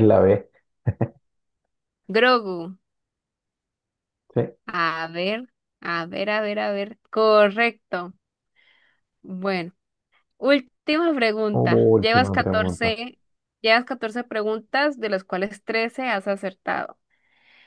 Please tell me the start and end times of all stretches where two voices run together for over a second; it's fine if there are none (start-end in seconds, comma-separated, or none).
11.5-12.9